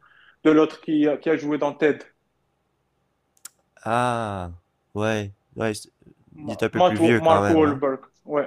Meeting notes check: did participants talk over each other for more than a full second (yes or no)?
yes